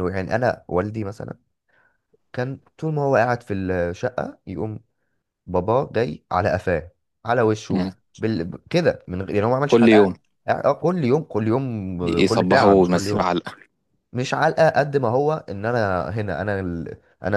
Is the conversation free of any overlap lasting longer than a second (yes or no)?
no